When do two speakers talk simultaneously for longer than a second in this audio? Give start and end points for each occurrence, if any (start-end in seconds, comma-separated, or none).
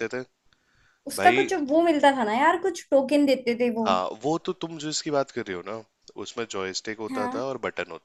none